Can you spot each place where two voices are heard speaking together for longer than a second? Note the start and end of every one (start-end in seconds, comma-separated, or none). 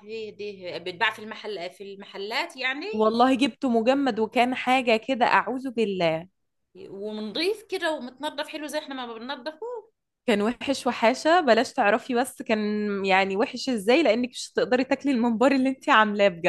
none